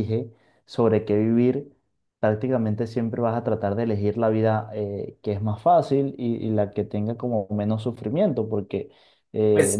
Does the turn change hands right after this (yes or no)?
yes